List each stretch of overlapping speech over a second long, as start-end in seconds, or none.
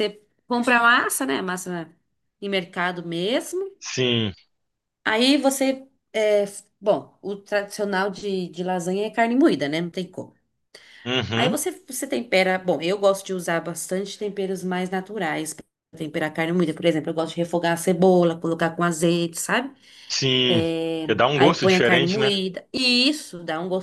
20.5-22.3